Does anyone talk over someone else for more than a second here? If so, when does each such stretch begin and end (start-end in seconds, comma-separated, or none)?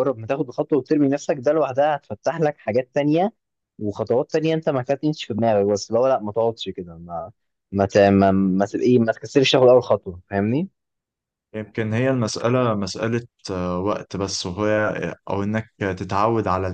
none